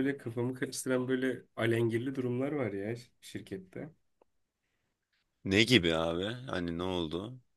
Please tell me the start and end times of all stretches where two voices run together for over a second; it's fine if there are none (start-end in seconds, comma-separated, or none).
none